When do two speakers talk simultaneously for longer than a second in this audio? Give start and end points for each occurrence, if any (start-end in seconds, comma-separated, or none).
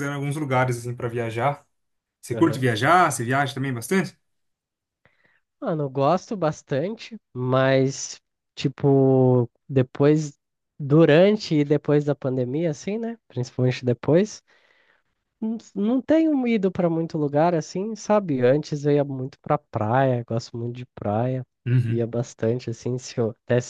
none